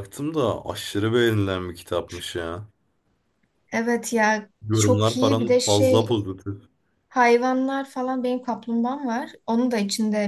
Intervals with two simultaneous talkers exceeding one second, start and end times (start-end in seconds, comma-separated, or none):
4.6-6.2